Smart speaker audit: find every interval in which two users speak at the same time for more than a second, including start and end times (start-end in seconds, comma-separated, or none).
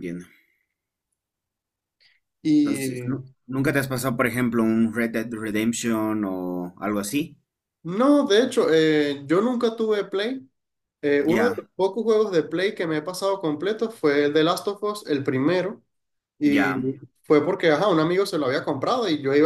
none